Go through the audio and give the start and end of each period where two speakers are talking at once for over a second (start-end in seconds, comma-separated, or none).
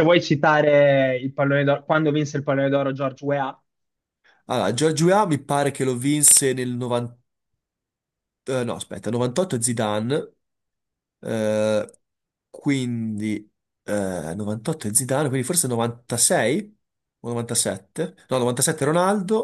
none